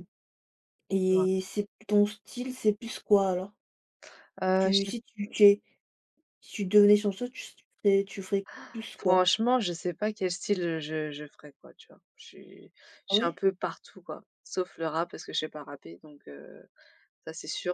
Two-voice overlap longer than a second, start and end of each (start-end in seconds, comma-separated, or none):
none